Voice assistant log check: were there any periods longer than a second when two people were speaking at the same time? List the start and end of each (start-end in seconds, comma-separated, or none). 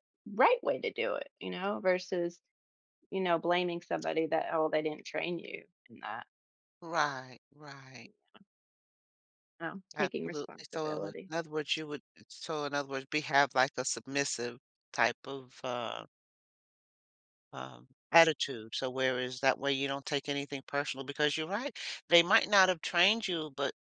9.9-11.3